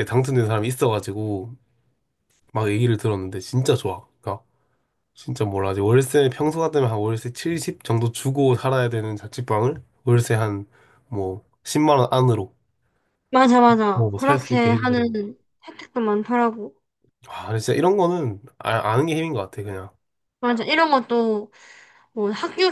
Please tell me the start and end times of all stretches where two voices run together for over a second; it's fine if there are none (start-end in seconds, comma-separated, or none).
13.9-15.2